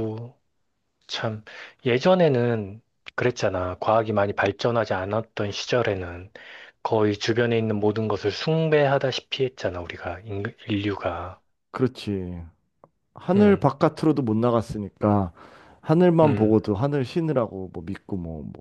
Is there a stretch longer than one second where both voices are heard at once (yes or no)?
no